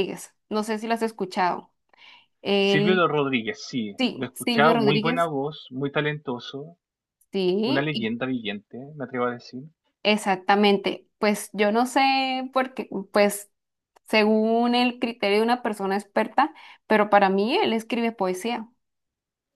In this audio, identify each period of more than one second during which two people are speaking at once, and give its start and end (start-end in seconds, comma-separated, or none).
4.0-5.3